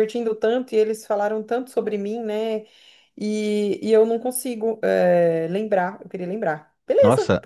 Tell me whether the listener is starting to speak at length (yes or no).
yes